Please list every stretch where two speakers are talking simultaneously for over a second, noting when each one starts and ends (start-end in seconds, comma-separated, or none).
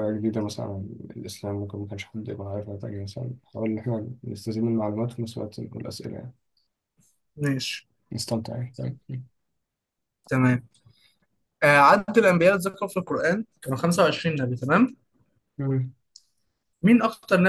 none